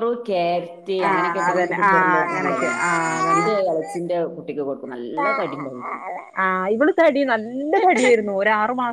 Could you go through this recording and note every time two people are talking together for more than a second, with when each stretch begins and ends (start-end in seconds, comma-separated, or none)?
1.1-2.7